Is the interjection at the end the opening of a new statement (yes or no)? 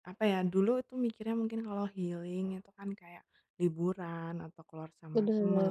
no